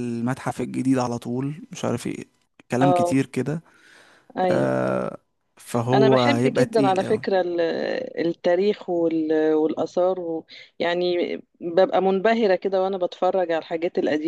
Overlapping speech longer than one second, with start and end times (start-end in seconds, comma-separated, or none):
5.9-7.2